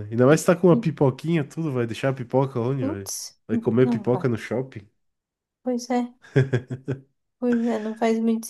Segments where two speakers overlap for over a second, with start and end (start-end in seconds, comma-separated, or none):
none